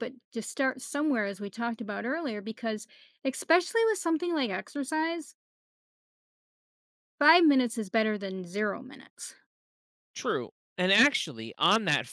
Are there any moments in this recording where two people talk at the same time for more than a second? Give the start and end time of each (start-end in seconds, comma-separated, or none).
none